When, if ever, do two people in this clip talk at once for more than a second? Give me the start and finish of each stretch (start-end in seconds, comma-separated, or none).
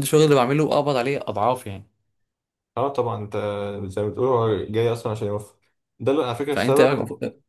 none